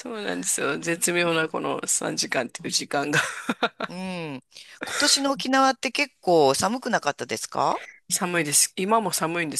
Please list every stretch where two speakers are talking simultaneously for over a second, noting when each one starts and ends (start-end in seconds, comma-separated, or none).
none